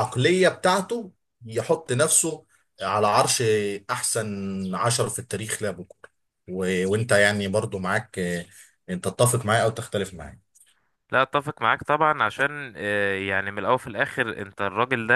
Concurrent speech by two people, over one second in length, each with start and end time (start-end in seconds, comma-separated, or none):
none